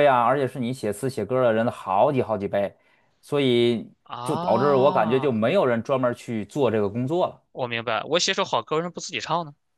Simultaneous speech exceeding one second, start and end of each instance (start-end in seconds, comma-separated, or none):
4.1-5.3